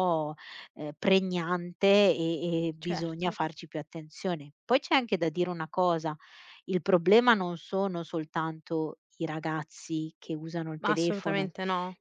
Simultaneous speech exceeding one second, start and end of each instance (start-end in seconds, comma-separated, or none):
none